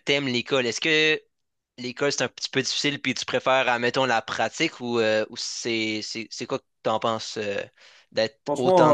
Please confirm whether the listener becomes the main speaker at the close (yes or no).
yes